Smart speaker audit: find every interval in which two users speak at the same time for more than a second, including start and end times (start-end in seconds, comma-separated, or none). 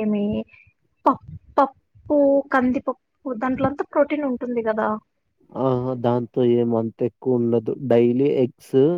none